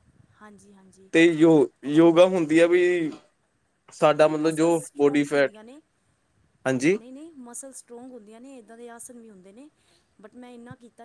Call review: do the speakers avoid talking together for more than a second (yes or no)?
no